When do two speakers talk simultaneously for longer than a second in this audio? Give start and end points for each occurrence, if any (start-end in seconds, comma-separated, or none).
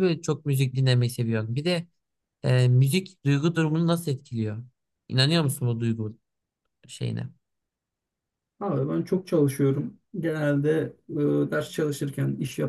none